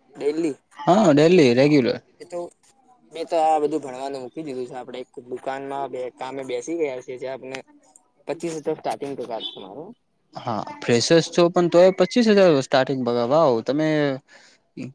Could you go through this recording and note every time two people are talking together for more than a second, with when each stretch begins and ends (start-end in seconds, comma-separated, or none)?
none